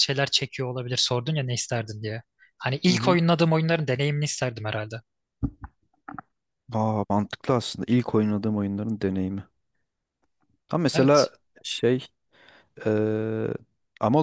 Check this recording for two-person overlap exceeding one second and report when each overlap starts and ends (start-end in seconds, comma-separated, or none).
none